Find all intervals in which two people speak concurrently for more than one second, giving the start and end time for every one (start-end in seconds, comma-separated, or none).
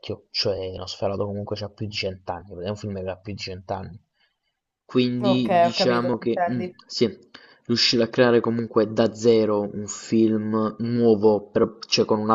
5.2-6.8